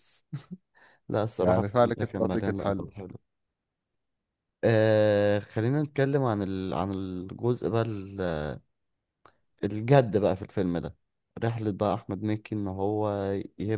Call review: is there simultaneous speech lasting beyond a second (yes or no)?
yes